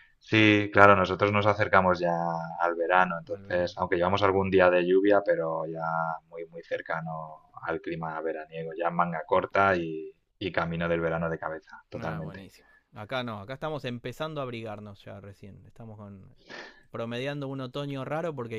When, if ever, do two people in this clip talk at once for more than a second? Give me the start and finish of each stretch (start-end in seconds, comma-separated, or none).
none